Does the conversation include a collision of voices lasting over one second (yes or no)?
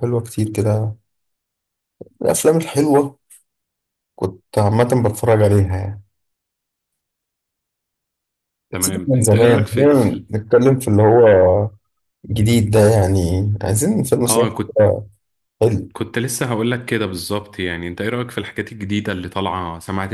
yes